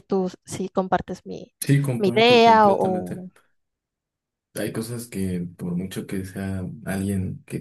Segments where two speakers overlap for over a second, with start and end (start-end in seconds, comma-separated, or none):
2.0-3.3